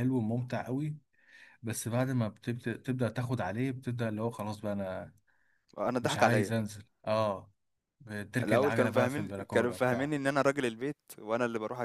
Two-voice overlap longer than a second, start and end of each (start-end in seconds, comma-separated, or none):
8.4-10.2